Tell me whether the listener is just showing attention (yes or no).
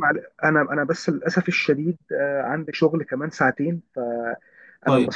yes